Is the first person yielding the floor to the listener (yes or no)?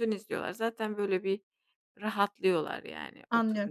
yes